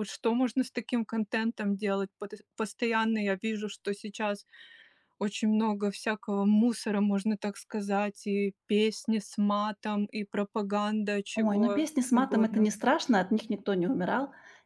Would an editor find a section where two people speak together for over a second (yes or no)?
yes